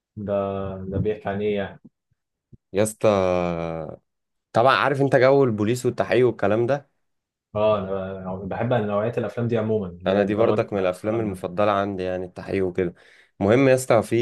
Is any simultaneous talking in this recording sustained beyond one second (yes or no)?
yes